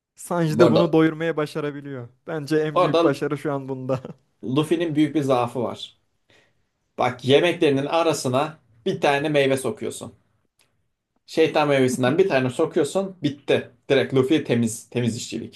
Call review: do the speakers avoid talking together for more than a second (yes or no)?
yes